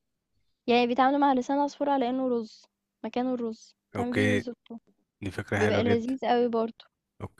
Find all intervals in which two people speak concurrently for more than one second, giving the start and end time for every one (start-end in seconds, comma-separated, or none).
none